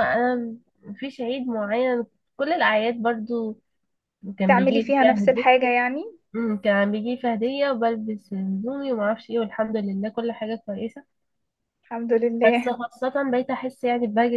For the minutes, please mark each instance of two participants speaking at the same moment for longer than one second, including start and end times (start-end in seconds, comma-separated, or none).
4.4-5.7